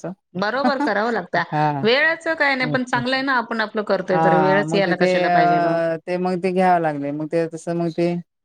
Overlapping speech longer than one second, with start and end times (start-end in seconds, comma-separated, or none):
4.1-5.8